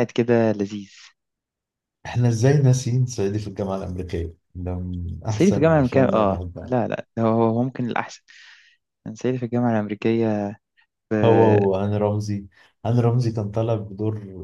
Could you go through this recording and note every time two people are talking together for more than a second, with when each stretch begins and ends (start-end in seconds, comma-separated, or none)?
5.3-6.8